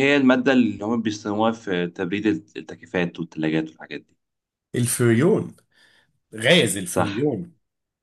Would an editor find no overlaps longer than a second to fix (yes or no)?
yes